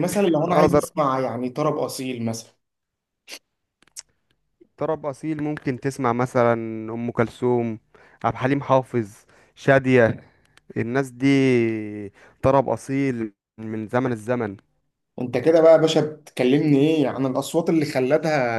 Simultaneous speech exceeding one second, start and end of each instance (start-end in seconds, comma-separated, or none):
none